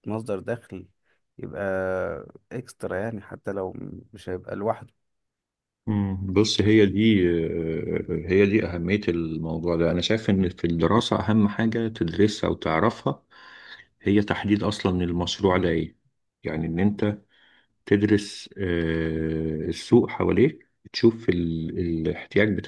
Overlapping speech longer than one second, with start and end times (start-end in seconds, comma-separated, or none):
none